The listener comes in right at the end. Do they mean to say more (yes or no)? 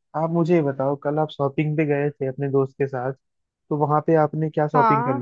no